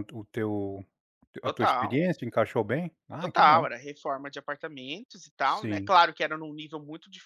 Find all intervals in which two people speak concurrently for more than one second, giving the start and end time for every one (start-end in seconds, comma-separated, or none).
none